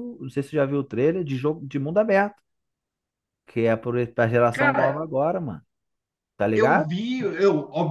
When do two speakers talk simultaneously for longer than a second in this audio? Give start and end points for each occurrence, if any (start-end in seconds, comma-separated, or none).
none